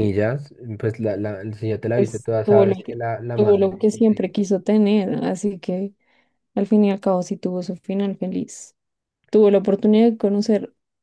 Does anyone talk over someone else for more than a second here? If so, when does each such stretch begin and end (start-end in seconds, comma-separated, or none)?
1.9-4.5